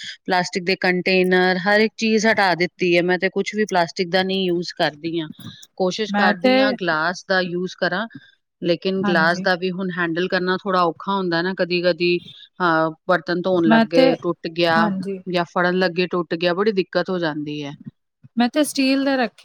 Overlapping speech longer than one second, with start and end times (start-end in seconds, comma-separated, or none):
none